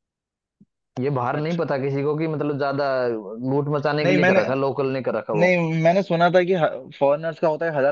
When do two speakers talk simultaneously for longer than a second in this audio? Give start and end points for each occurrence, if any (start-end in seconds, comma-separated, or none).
none